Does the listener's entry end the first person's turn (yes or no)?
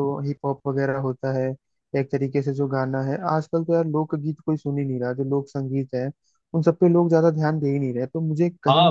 yes